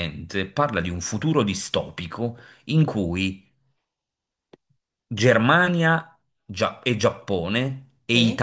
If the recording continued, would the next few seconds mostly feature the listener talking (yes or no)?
no